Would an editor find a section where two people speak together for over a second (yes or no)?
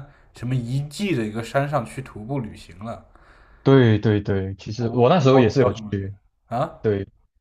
yes